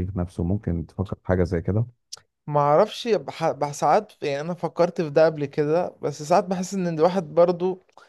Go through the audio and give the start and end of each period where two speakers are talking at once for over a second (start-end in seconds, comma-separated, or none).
none